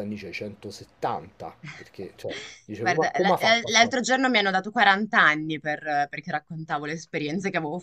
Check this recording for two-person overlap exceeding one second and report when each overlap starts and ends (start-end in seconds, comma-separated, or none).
2.8-4.1